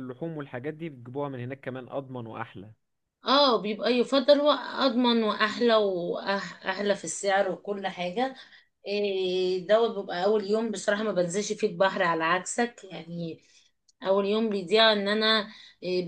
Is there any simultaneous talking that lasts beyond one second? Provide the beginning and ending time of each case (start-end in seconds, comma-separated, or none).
none